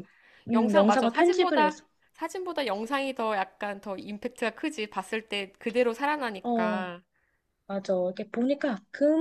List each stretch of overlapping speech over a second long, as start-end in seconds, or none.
0.5-1.8